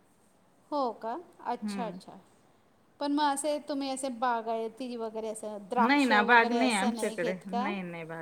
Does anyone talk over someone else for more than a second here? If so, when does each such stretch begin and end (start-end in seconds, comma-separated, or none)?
5.8-7.7